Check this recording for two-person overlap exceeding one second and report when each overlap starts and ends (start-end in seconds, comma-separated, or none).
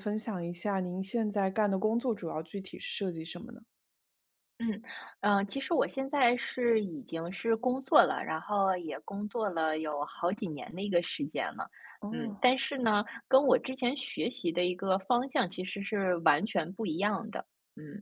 none